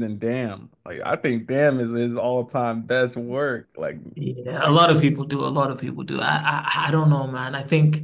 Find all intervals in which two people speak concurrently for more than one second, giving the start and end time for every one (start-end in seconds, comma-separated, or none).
none